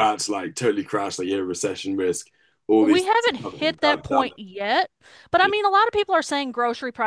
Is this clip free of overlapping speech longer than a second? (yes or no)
no